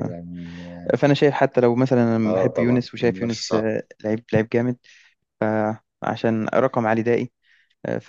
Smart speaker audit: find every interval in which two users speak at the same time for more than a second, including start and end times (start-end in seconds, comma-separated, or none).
2.2-3.6